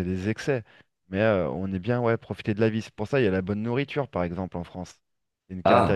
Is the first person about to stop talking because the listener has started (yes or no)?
yes